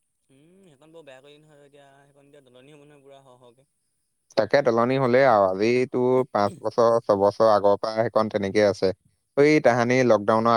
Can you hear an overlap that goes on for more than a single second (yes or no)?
no